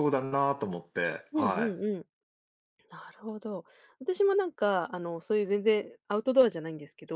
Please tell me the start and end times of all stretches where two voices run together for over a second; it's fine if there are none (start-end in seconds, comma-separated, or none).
none